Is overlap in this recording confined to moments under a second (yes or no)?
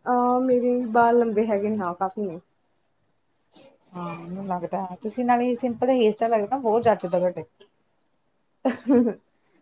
yes